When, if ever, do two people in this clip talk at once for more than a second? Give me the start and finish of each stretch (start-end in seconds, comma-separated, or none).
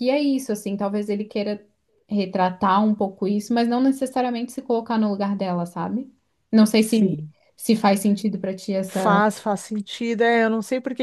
none